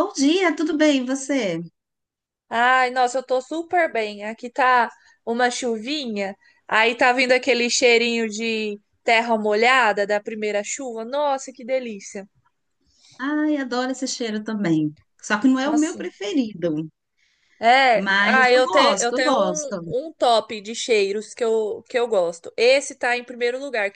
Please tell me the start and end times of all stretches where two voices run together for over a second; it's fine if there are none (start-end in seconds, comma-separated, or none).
17.9-20.0